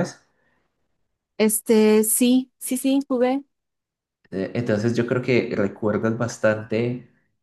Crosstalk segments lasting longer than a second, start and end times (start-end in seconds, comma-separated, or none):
none